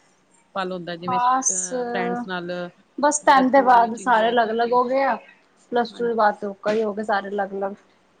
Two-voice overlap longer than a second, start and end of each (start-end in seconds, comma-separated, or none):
3.2-4.8